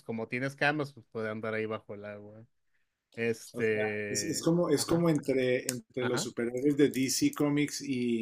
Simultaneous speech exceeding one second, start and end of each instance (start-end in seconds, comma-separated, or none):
3.5-5.1